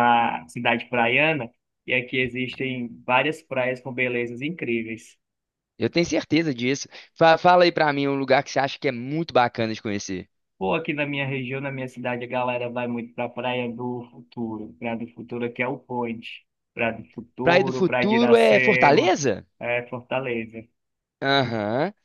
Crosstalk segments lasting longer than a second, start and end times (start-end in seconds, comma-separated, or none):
17.4-19.2